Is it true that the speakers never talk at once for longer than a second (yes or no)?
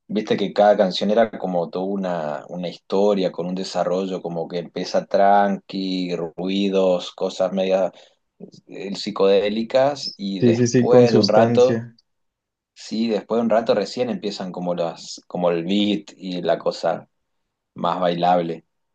no